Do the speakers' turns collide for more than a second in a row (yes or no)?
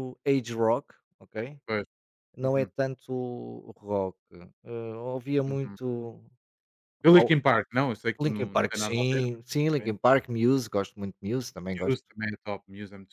yes